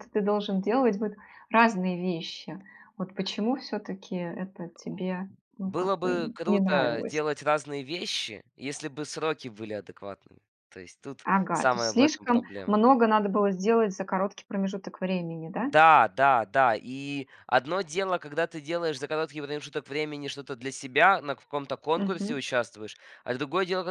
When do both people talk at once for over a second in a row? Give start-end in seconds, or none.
5.6-7.2, 11.2-12.8